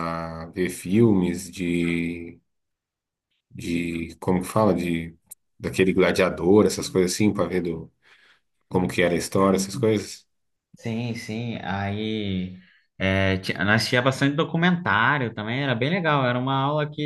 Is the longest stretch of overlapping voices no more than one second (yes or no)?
yes